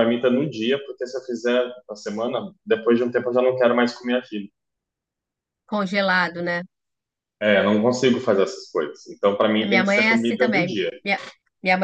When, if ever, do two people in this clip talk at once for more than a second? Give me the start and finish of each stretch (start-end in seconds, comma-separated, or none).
9.6-10.9